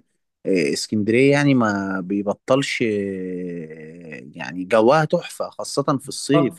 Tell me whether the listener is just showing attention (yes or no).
yes